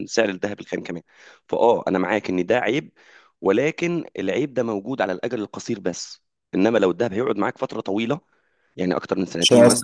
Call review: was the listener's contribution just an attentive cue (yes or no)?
yes